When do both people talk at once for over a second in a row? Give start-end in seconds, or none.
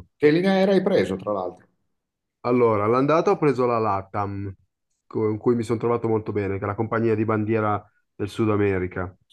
none